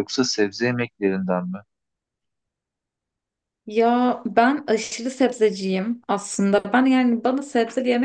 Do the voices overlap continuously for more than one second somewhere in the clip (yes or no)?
no